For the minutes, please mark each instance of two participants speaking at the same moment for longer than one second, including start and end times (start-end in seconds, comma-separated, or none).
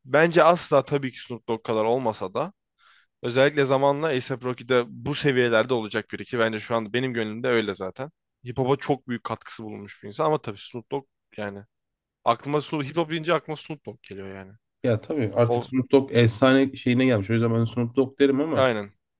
none